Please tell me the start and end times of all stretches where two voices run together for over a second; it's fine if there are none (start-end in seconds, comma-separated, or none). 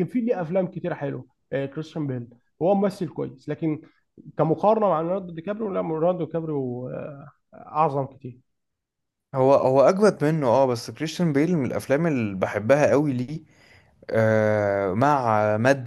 none